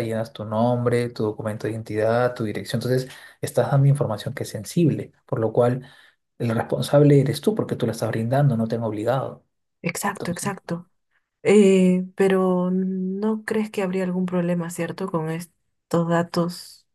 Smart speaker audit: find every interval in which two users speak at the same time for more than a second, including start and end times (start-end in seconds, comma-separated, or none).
none